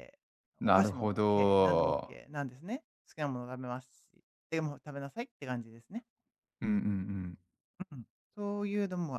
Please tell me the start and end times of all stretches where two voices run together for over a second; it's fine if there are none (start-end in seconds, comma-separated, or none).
0.6-2.2